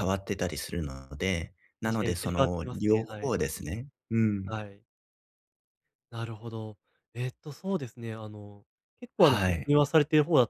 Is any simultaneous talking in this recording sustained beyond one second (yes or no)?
yes